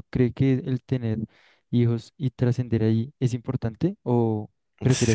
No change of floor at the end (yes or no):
no